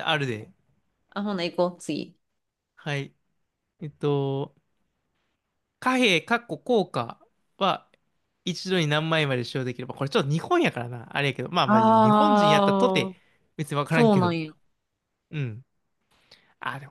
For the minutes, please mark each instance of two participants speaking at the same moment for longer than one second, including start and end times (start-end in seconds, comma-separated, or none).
11.6-13.1